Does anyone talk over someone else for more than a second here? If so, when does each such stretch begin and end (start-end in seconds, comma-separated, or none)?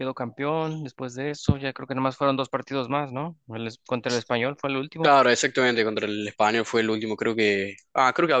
none